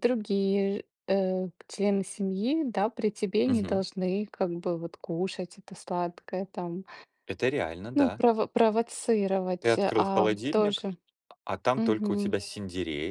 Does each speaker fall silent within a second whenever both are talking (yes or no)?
no